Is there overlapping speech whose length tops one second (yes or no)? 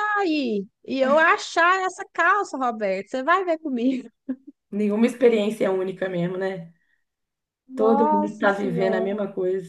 yes